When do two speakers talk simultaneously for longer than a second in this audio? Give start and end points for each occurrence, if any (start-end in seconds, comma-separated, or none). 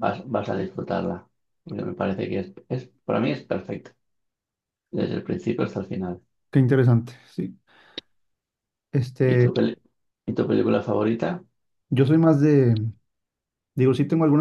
none